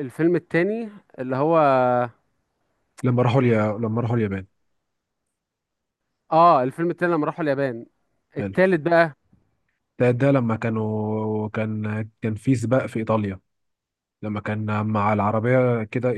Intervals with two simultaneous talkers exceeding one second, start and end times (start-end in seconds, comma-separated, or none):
none